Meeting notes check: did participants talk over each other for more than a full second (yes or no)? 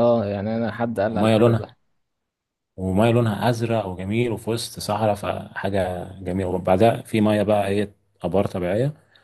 no